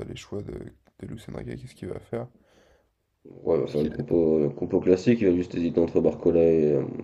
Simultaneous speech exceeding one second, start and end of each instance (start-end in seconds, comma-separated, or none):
none